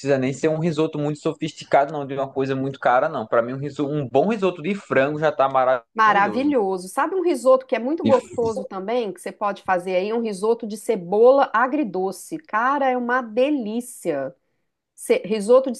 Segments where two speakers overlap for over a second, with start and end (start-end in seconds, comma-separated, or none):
none